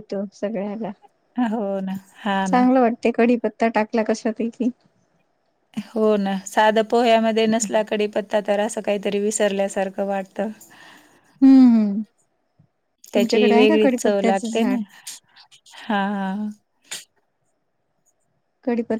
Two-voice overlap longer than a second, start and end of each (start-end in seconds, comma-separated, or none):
13.2-14.8